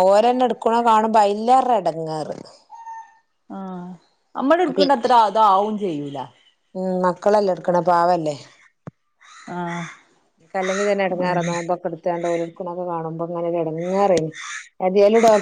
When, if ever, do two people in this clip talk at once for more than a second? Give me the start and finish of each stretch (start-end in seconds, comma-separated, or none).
none